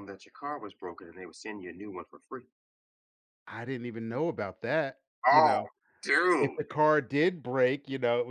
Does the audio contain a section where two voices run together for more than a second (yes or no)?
no